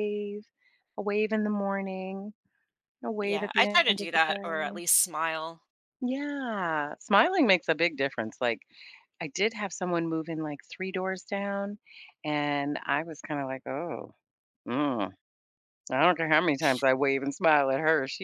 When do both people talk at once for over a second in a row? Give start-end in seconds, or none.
3.2-4.8